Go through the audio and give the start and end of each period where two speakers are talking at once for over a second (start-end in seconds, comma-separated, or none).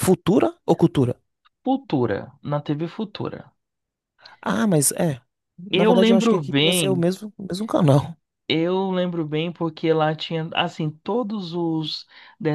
5.7-7.0